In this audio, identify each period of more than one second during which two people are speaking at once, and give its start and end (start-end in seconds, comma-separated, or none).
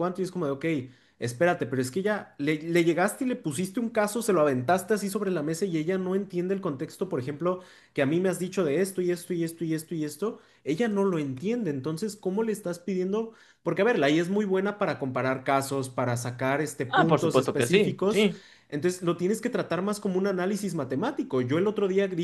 16.9-18.3